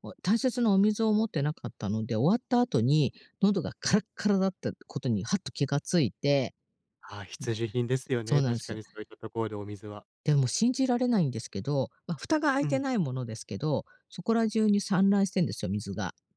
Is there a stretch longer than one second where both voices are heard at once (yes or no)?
no